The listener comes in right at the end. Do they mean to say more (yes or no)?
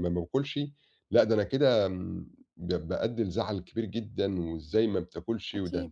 no